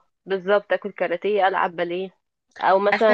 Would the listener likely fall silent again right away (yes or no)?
yes